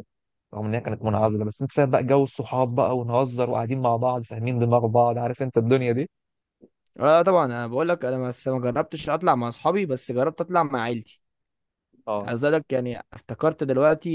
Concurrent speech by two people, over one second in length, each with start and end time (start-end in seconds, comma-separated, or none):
none